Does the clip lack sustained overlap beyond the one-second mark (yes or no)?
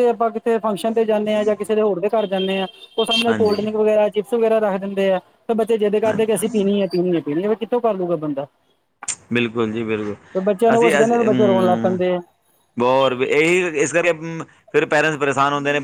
no